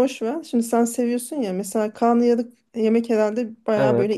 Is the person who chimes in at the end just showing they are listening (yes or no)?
yes